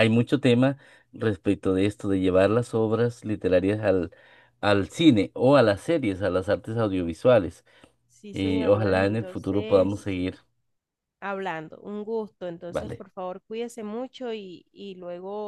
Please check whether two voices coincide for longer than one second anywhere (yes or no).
yes